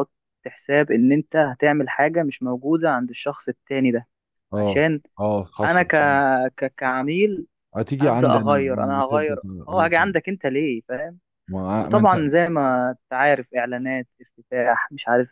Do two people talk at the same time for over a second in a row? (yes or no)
yes